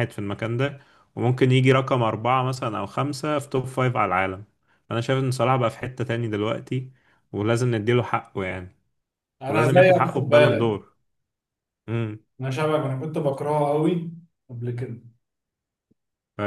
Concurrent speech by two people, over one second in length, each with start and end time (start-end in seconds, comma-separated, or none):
9.5-10.8